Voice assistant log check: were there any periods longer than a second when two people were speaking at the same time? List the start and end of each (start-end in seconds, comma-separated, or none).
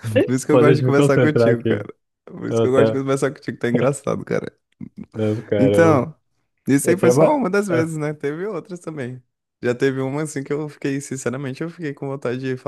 0.5-1.8